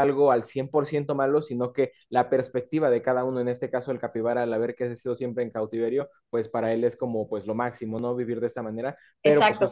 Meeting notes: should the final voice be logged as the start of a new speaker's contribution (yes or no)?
yes